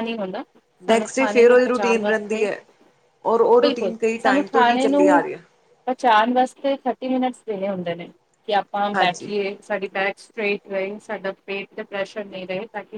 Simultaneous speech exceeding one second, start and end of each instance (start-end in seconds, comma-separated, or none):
0.9-2.5, 3.6-5.2